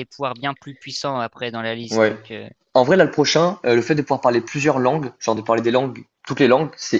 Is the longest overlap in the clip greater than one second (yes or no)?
no